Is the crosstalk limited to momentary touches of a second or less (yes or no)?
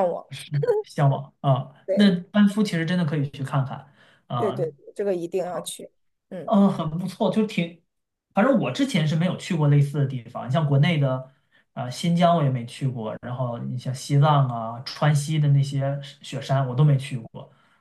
yes